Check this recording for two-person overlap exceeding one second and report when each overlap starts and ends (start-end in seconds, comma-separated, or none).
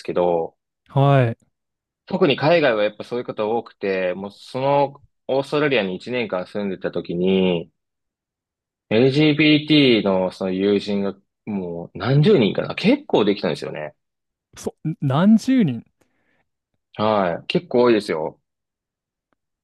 none